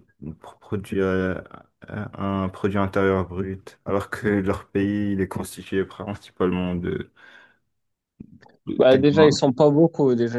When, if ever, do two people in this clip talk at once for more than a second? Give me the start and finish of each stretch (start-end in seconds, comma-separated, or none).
none